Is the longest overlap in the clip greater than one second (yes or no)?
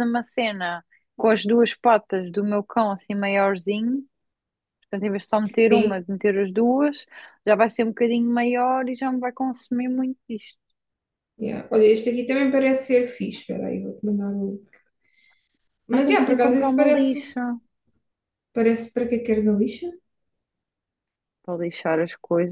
yes